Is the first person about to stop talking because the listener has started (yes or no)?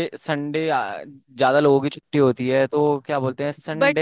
yes